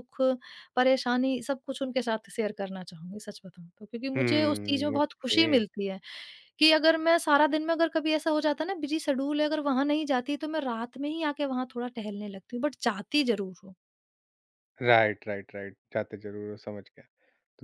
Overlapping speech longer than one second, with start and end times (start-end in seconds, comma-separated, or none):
4.1-5.6